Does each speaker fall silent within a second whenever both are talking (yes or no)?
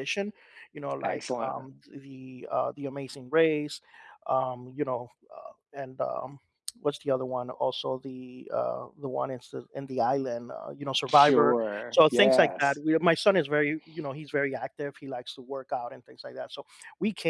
no